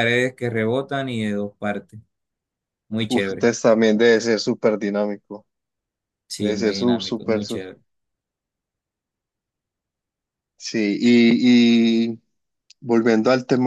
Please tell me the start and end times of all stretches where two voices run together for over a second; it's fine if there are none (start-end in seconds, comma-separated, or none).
6.4-7.6